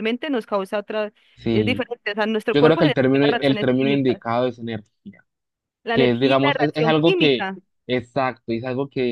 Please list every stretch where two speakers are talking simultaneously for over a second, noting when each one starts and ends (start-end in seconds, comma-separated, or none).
2.5-4.2, 5.9-7.5